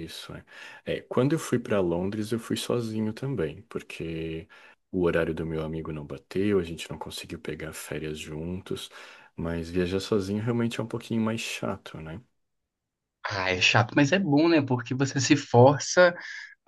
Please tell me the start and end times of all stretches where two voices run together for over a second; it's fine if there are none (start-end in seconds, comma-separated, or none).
none